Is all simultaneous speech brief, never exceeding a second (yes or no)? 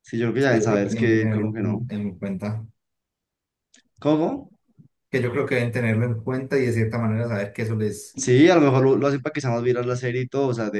no